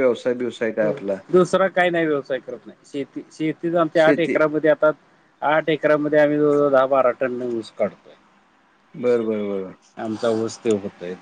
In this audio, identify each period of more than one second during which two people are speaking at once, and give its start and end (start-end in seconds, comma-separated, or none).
none